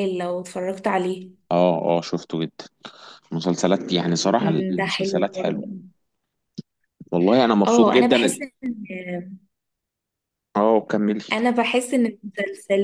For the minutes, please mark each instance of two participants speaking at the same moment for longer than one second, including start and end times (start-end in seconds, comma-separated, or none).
4.4-5.6